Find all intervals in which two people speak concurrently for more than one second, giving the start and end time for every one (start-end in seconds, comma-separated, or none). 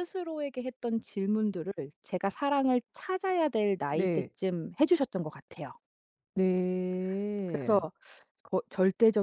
none